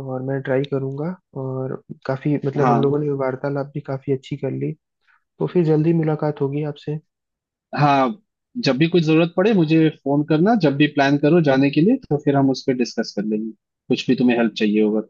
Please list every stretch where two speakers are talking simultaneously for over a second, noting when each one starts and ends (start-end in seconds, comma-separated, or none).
none